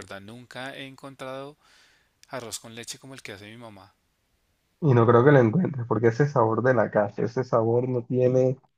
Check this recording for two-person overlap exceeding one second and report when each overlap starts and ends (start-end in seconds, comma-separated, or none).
none